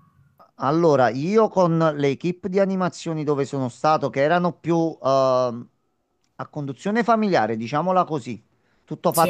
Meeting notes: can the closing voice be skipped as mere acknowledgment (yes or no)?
yes